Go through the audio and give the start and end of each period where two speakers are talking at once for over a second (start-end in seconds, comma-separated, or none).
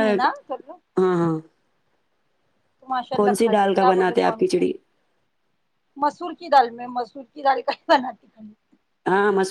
3.2-4.6